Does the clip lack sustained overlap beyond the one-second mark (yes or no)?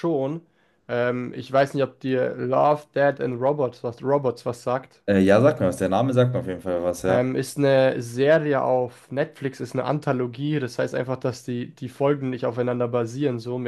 yes